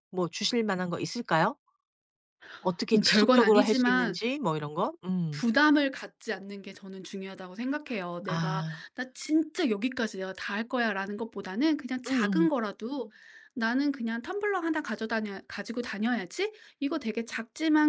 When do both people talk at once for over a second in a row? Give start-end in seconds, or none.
2.9-4.2